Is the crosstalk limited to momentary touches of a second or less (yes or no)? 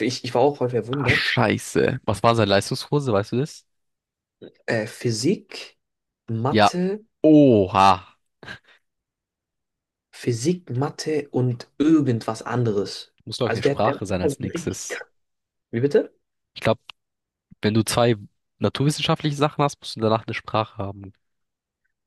no